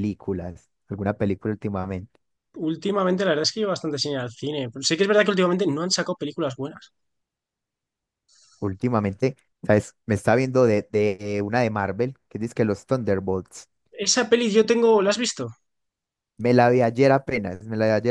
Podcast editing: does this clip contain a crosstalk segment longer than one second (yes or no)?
no